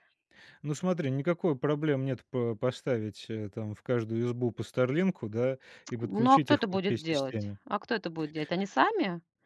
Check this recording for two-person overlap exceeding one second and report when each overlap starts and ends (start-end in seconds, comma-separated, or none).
6.0-7.6